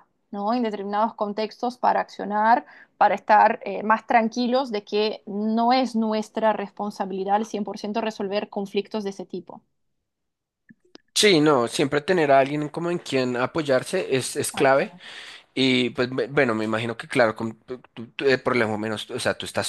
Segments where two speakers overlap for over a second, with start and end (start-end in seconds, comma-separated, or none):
none